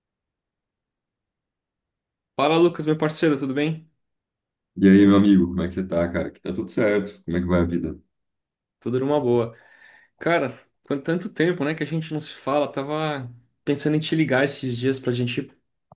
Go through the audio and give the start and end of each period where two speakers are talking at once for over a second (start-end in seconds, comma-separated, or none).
none